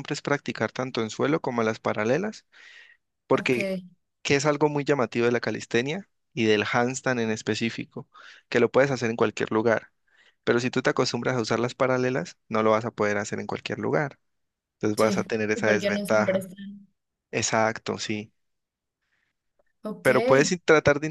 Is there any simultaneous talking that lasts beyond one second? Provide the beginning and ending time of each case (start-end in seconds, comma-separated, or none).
14.9-16.5